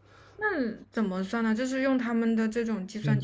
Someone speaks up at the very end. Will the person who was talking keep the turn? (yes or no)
no